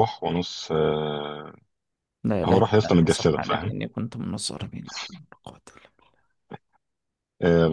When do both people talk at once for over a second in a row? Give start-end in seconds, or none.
2.5-3.7